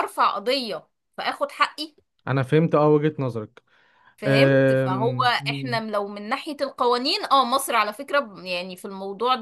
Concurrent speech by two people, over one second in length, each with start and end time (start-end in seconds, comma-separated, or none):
4.2-5.8